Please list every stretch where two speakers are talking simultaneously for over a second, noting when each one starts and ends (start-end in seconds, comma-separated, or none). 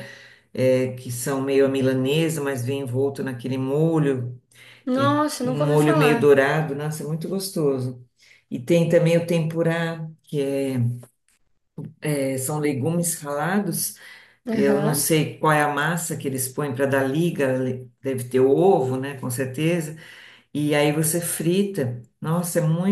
5.0-6.4